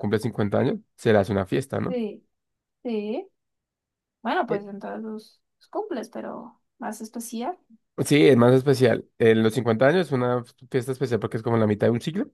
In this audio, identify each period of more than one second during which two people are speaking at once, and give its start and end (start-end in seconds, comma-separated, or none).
none